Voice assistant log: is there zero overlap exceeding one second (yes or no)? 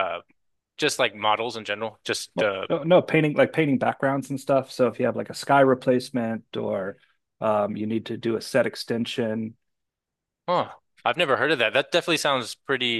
yes